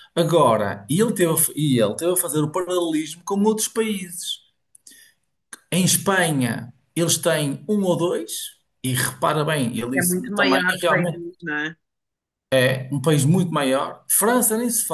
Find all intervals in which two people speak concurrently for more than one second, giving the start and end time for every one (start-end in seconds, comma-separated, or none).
10.0-11.2